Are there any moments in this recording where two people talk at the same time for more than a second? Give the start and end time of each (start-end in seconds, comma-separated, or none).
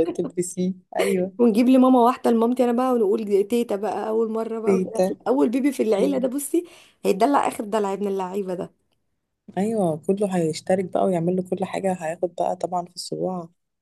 none